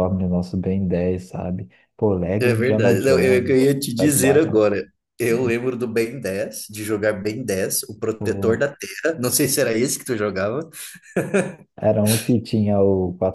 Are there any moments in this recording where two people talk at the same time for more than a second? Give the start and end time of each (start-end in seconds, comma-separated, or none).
2.4-4.6